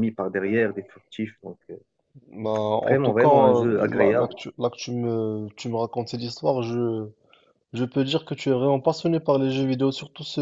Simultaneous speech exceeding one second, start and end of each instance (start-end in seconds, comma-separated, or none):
2.8-4.3